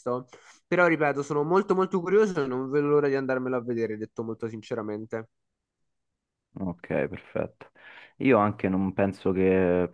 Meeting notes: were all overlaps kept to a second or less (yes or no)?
yes